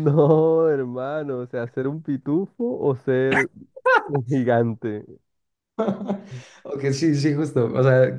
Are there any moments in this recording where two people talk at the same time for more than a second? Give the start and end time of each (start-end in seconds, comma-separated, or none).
none